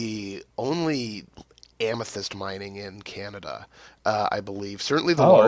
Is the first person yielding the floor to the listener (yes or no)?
no